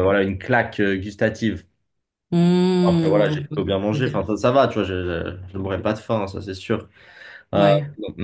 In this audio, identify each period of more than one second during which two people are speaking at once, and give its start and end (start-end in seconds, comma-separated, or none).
2.9-4.2